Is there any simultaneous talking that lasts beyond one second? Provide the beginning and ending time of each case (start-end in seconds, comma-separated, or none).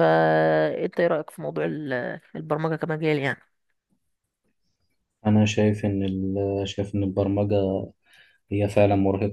none